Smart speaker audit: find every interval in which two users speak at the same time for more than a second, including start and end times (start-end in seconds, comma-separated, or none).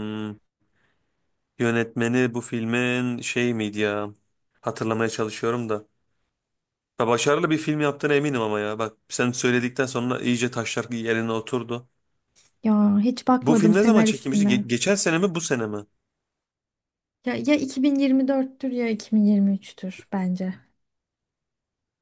13.4-14.6